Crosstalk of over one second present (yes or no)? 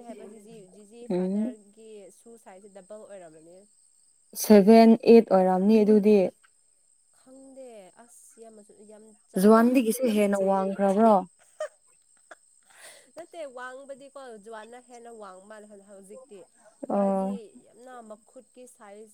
yes